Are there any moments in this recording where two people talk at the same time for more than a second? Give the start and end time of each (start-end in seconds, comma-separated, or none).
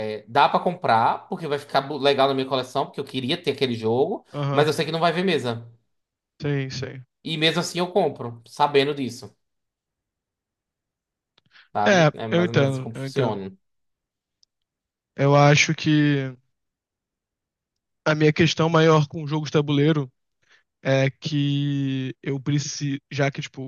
11.9-13.4